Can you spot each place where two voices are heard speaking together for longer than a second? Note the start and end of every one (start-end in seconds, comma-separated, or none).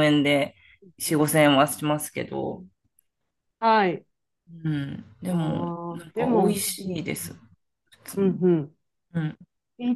5.3-7.0